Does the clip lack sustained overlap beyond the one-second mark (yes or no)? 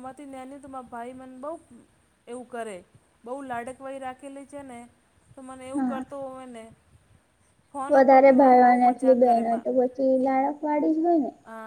no